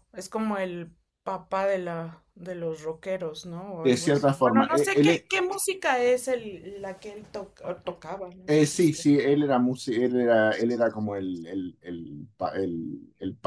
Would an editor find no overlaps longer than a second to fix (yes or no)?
no